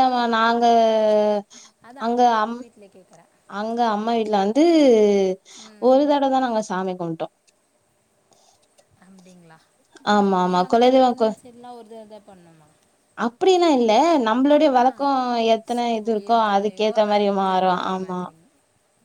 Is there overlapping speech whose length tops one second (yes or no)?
yes